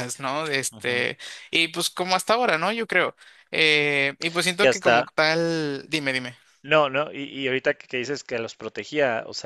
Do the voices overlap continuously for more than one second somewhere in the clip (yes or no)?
no